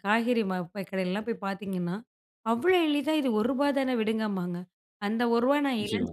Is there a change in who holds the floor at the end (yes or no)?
no